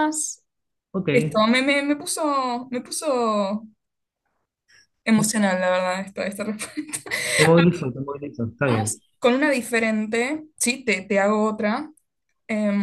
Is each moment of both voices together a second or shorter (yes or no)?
yes